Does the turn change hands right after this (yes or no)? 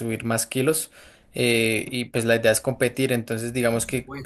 no